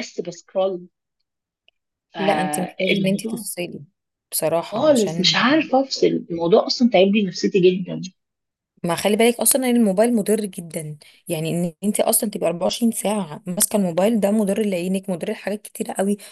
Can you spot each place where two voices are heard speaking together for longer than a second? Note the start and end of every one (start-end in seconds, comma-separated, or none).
2.2-3.5